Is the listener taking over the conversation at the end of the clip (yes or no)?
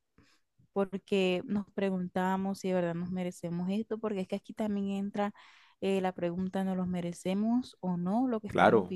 yes